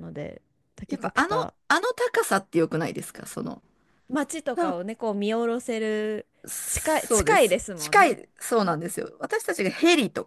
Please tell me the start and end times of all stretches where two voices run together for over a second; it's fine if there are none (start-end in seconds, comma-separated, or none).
6.7-8.2